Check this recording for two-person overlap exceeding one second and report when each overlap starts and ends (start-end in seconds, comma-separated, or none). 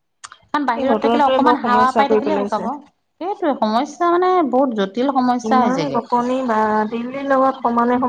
0.8-2.6